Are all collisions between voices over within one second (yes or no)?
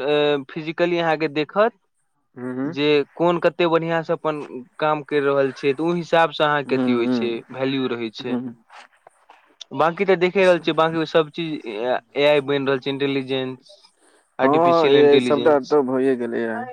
no